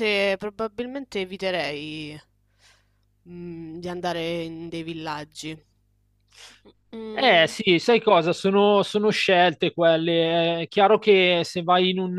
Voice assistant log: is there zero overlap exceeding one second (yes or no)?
yes